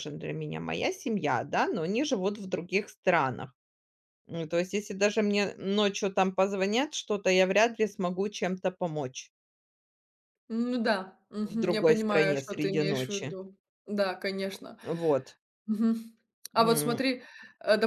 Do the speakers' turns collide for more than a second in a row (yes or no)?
yes